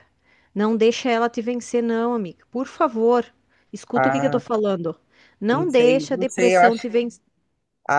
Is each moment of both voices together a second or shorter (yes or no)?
no